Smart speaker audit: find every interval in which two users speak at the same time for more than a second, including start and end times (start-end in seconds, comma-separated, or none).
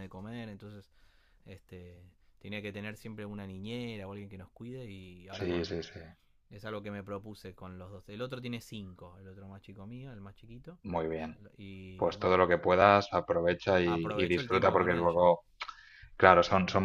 13.8-15.4